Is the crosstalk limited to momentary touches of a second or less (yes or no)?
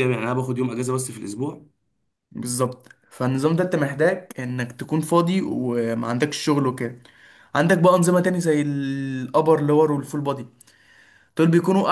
yes